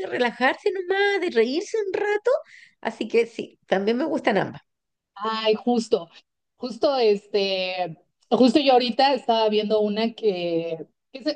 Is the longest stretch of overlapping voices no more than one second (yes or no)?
yes